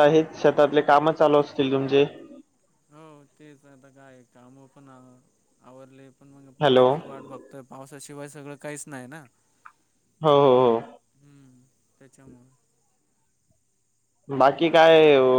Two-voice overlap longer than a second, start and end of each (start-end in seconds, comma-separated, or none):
none